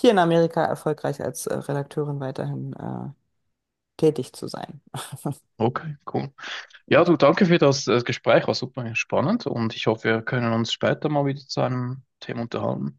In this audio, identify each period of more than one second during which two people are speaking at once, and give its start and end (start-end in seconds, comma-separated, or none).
none